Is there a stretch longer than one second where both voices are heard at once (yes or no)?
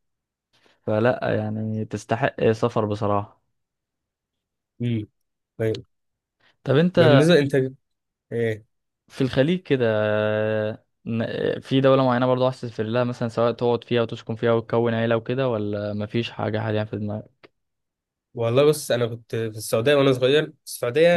no